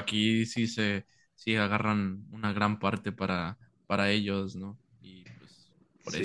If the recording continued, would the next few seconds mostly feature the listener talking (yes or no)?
yes